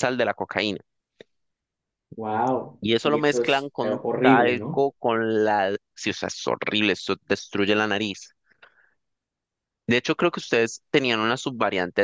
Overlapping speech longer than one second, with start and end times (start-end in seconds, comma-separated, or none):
2.8-4.9